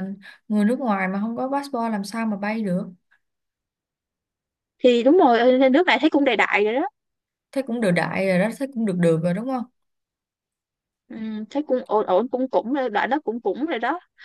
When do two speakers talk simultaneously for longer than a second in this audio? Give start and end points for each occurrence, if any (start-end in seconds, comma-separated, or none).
none